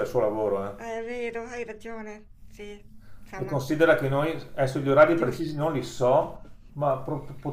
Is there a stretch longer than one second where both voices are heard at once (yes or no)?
no